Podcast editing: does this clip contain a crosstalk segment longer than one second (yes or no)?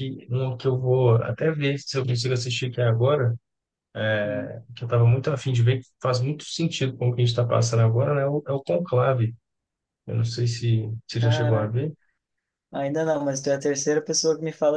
no